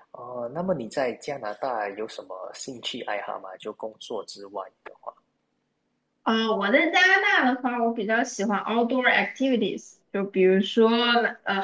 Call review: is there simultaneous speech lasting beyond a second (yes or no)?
no